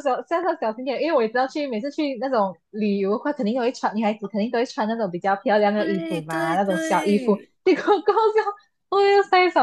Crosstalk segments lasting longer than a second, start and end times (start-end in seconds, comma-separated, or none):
5.8-7.5